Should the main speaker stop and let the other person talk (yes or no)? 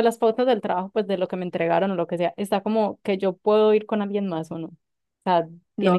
yes